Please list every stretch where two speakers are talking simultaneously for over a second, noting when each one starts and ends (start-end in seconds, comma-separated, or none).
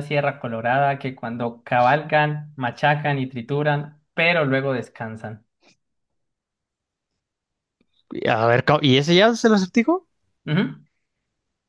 none